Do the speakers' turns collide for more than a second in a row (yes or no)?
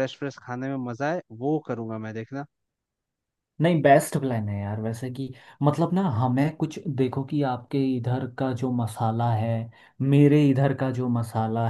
no